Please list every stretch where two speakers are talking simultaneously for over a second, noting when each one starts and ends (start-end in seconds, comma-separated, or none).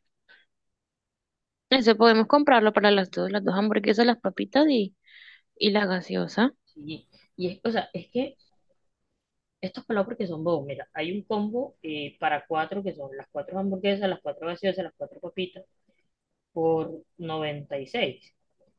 none